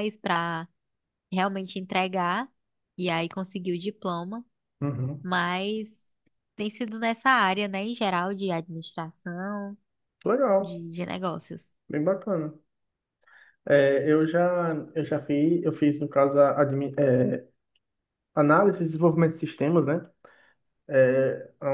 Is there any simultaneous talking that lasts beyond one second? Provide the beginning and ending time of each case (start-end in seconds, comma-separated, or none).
none